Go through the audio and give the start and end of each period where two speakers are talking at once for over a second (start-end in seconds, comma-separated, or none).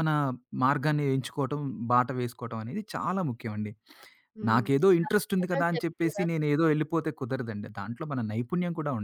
4.5-6.3